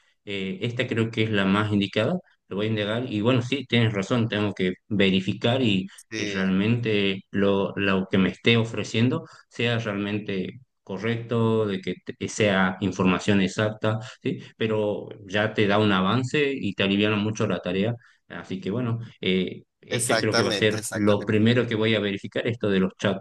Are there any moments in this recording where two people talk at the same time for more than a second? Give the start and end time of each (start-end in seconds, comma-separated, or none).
19.9-21.4